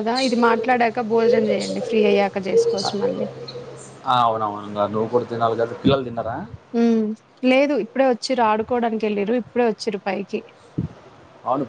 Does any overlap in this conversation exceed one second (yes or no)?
no